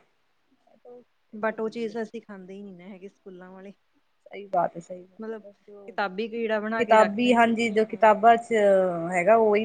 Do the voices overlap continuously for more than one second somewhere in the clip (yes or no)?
yes